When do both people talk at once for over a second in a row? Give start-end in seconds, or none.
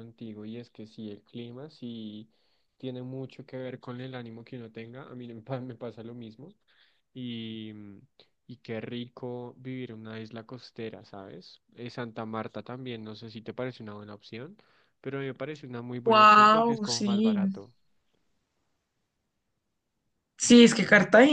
16.1-17.4